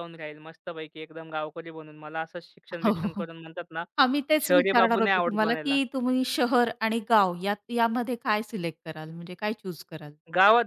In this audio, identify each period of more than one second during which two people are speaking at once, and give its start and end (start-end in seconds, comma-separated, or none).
4.5-5.8